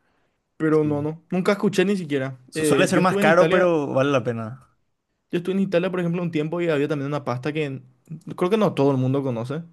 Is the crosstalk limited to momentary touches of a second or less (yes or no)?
no